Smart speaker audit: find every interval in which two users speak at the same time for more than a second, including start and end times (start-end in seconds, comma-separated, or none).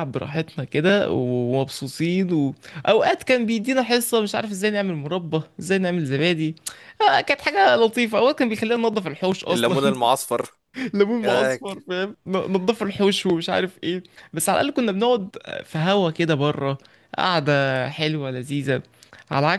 none